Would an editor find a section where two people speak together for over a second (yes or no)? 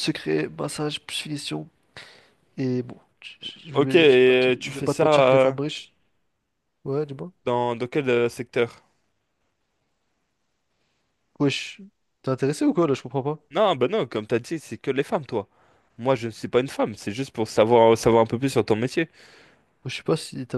yes